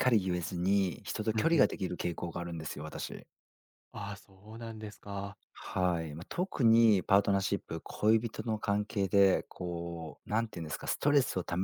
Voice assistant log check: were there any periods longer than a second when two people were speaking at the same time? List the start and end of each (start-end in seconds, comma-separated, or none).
none